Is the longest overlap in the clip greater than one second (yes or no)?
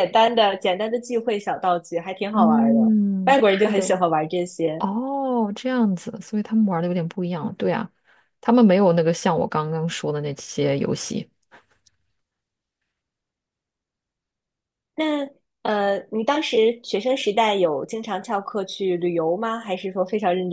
yes